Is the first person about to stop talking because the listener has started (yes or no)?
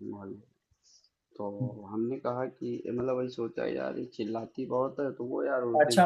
yes